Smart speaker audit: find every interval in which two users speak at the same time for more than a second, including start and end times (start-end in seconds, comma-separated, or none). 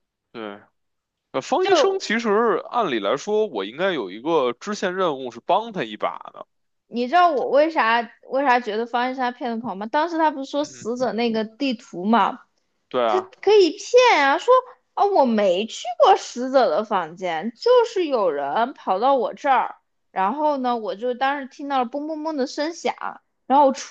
none